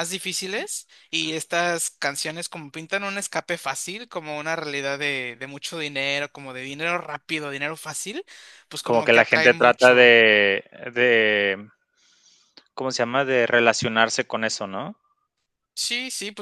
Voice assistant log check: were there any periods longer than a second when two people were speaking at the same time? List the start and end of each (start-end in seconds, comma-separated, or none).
8.8-10.1